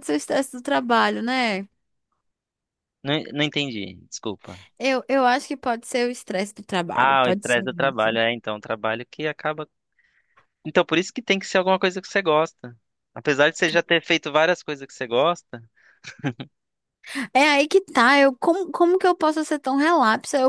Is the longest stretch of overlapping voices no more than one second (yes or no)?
no